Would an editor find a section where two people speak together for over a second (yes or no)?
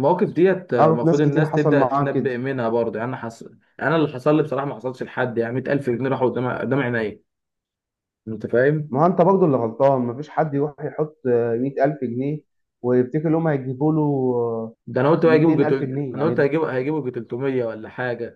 yes